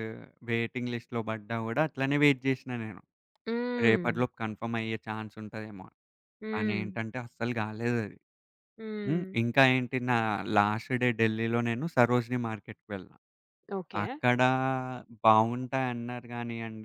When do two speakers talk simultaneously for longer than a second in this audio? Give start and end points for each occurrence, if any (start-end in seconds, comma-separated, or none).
none